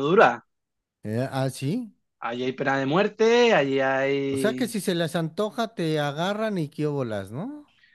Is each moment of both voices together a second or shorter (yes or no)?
yes